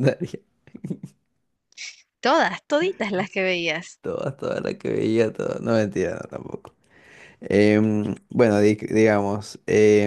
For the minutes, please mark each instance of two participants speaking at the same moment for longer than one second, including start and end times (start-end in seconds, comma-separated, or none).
none